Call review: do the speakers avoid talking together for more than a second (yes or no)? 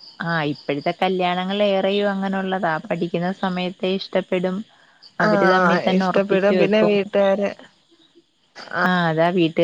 no